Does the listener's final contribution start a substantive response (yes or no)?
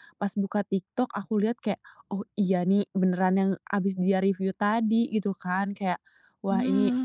no